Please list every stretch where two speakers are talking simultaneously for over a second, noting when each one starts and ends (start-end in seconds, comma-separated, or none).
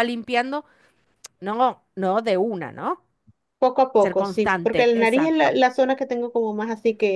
4.0-5.5